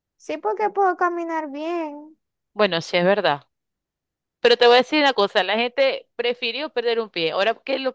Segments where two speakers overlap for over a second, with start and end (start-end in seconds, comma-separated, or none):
none